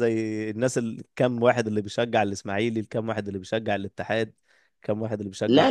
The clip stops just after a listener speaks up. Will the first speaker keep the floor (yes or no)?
no